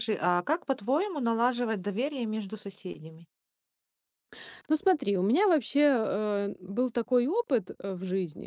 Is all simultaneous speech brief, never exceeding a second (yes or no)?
yes